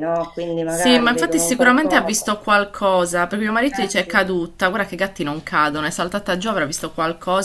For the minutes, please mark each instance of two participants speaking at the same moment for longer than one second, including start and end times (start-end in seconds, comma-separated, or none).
0.7-2.4